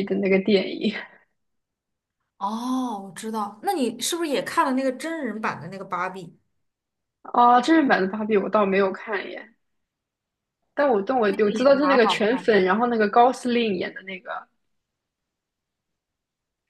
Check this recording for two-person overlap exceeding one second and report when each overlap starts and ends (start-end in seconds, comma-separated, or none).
11.3-12.6